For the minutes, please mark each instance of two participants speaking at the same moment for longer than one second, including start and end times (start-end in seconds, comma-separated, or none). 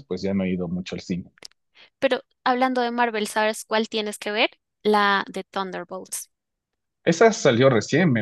none